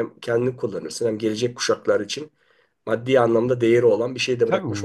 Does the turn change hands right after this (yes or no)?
yes